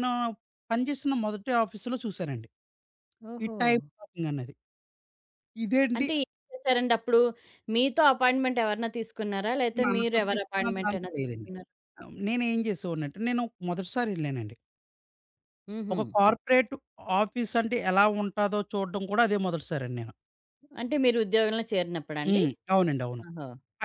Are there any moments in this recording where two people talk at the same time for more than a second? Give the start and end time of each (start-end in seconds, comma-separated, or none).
9.8-11.5